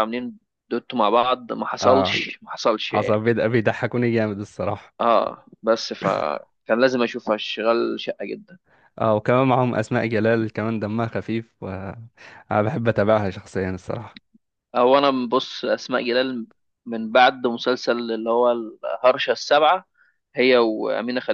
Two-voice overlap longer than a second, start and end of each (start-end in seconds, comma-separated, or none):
none